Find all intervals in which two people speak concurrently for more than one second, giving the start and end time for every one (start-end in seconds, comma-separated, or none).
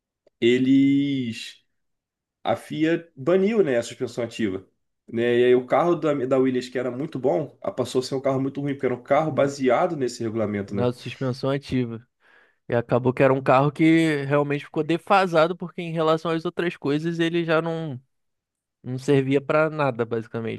none